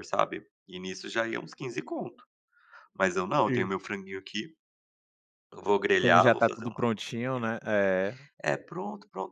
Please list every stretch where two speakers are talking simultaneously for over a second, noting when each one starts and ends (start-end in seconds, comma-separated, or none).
6.0-7.5